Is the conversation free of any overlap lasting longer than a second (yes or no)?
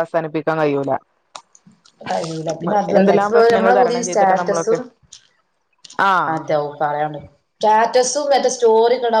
no